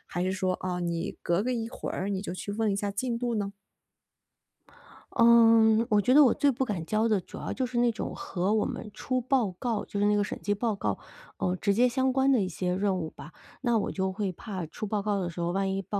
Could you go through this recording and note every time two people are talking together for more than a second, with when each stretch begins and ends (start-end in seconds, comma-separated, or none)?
none